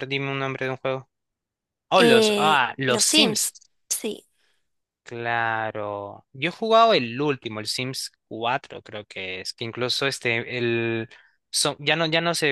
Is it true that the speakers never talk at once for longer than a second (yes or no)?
no